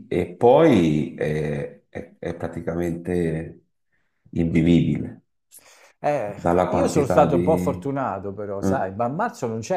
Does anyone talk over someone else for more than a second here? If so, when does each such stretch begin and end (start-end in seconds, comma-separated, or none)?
6.2-7.9